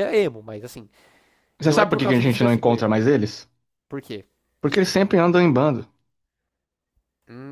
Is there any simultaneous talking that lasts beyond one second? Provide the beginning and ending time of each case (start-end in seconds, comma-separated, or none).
1.6-2.9